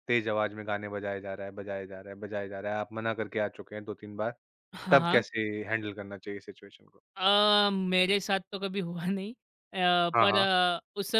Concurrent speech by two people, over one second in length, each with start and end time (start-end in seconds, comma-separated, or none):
none